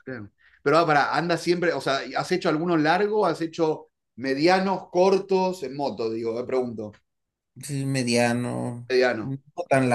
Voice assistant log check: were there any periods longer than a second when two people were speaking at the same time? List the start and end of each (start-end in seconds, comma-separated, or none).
none